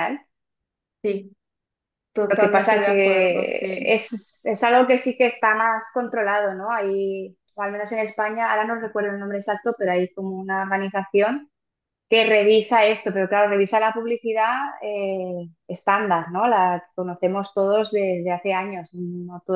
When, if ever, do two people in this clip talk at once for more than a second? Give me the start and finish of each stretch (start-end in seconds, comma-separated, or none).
2.3-4.0